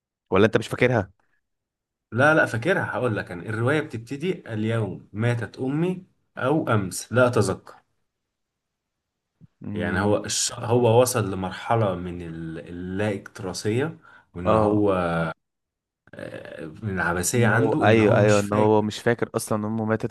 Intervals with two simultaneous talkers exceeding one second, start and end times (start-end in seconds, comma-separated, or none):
17.3-18.9